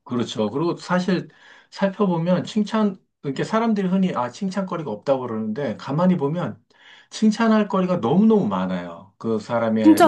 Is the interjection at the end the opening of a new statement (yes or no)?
no